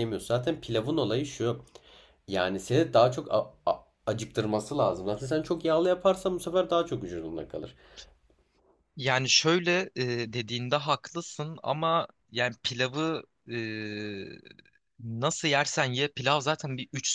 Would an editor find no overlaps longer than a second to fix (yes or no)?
yes